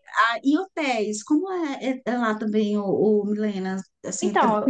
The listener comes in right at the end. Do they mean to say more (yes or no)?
yes